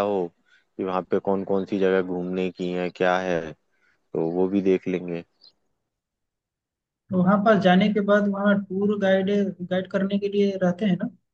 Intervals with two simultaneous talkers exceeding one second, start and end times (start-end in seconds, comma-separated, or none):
none